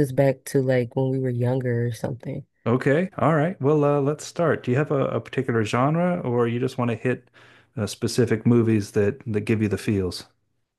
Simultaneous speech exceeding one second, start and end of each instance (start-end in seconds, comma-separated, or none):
none